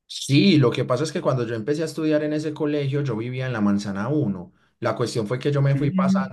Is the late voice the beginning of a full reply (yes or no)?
no